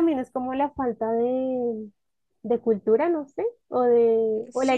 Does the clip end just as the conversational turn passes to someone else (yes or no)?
yes